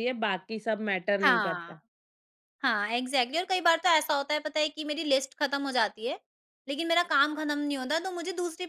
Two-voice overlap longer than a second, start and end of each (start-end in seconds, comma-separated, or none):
none